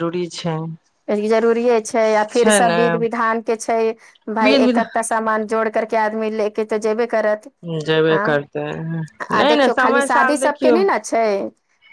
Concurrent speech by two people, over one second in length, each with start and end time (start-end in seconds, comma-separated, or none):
9.4-10.8